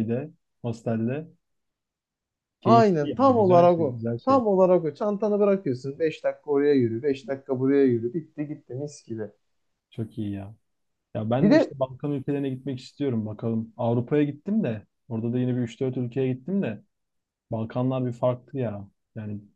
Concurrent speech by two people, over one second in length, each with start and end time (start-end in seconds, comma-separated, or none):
2.6-4.4